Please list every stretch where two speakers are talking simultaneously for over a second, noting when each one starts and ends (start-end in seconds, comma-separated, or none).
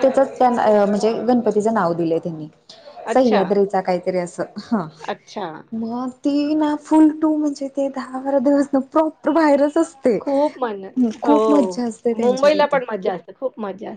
none